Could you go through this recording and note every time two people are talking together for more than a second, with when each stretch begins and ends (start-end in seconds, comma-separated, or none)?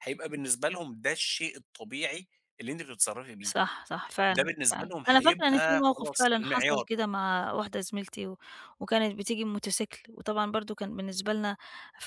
4.3-6.9